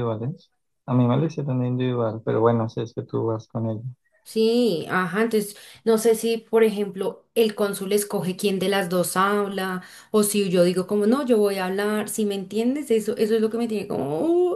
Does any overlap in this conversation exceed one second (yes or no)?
no